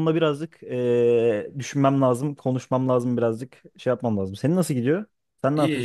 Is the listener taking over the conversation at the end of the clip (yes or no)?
yes